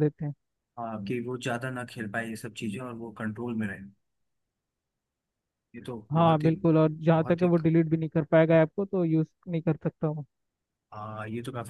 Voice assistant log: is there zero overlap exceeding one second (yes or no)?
yes